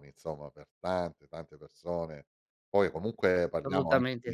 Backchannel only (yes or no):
yes